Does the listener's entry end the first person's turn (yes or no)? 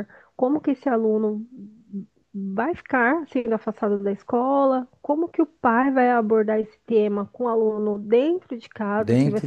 no